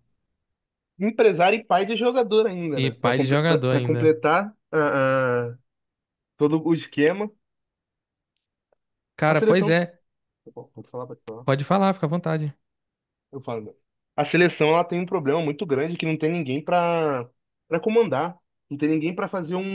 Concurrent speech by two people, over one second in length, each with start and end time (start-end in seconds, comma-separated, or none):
2.7-4.1